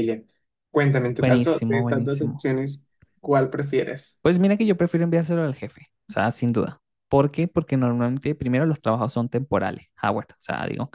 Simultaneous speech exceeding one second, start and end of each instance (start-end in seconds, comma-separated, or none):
1.2-2.5